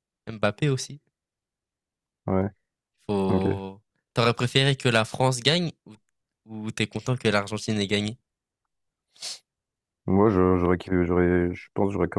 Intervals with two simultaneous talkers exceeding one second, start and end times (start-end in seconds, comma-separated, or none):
none